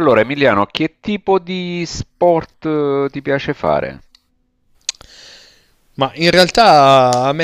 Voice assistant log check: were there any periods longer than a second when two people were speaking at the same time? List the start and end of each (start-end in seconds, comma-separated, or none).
none